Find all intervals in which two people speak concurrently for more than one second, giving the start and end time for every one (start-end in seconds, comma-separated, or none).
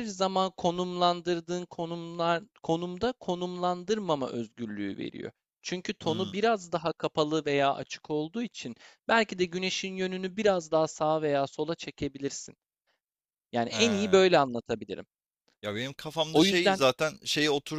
none